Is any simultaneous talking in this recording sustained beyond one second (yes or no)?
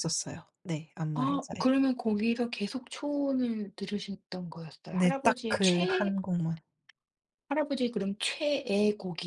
yes